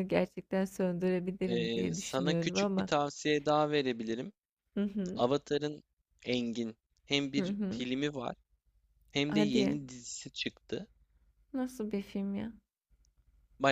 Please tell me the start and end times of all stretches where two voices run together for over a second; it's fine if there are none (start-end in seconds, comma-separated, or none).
1.5-2.9